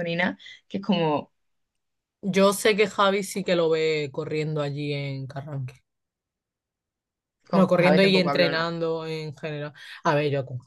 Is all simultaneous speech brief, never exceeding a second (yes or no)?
no